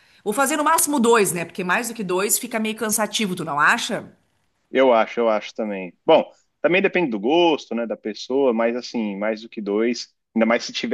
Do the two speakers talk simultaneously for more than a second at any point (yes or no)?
no